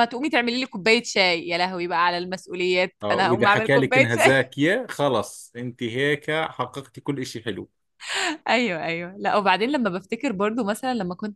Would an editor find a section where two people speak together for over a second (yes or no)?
yes